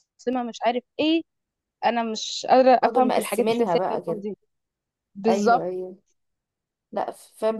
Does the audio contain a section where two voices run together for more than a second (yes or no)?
yes